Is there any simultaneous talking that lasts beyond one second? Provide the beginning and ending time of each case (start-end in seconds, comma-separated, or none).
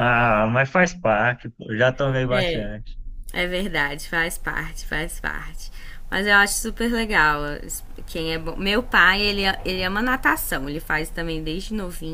none